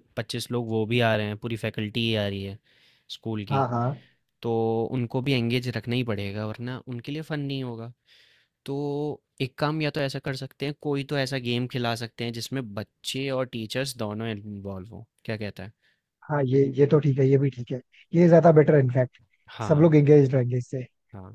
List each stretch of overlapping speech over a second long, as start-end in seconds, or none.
none